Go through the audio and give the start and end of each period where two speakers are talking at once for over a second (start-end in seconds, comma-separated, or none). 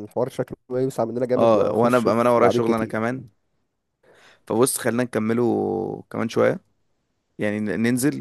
1.4-3.0